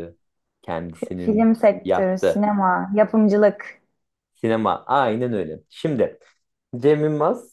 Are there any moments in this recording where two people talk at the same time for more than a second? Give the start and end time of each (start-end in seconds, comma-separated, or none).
0.9-2.5